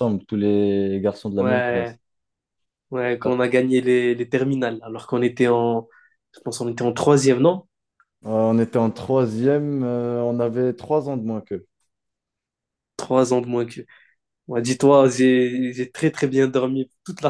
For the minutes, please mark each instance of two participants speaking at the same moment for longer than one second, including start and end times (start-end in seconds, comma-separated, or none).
none